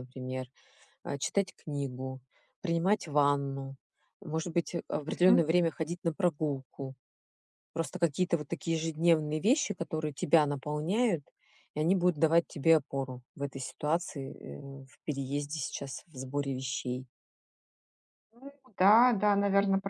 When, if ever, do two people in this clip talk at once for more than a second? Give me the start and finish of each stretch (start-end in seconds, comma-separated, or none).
none